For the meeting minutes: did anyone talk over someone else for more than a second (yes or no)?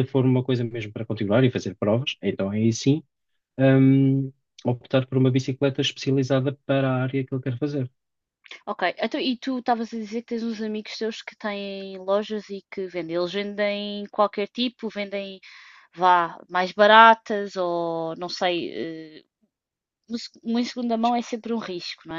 no